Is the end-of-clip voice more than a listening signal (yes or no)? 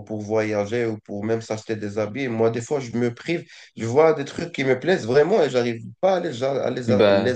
no